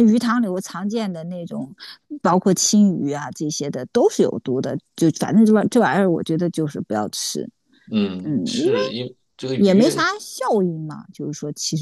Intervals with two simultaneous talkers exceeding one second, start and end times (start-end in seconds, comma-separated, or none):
none